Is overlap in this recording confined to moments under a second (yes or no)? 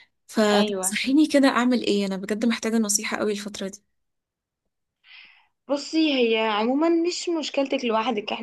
yes